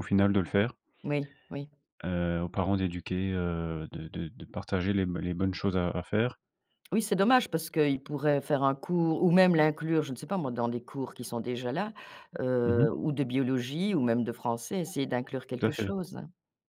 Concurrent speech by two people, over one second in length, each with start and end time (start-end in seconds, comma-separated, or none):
none